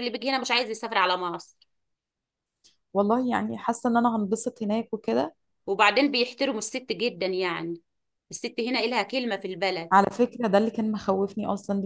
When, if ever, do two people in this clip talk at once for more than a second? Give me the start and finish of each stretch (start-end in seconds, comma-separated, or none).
none